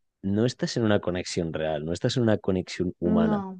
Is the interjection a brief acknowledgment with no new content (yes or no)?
yes